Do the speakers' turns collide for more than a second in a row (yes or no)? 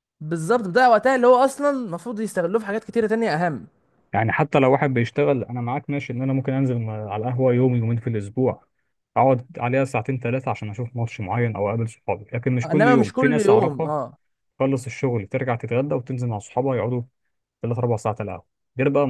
yes